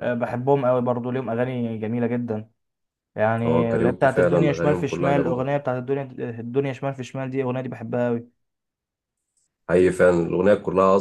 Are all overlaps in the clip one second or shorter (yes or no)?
no